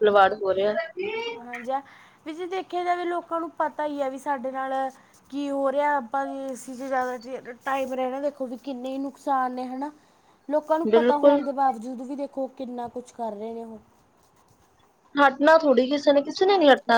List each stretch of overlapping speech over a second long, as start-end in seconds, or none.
none